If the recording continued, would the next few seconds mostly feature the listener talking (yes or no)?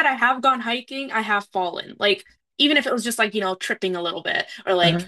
no